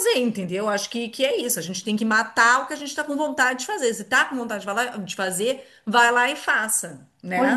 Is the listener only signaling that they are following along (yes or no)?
no